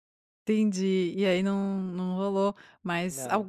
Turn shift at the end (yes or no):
no